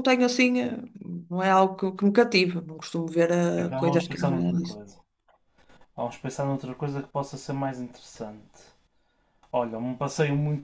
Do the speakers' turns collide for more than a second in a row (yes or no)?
yes